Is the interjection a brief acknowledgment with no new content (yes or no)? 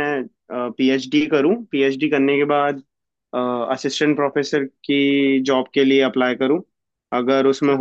yes